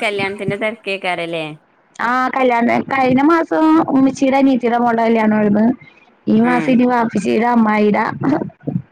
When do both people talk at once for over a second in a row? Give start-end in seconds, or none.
none